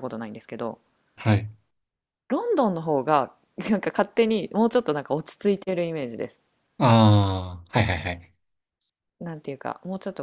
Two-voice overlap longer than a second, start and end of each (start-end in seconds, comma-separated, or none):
none